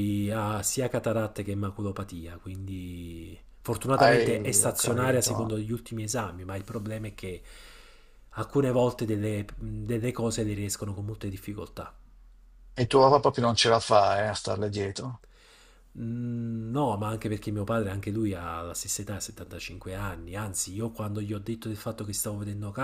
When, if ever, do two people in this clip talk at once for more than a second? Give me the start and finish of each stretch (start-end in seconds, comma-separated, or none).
4.0-5.4